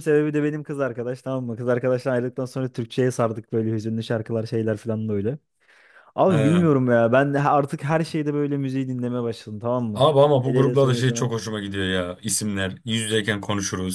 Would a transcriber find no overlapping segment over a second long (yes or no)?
no